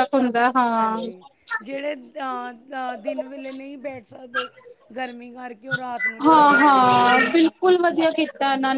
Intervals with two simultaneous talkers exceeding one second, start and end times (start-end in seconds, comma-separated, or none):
none